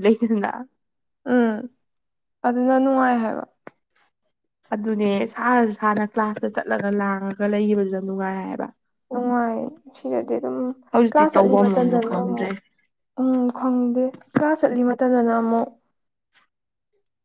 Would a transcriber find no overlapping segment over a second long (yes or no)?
no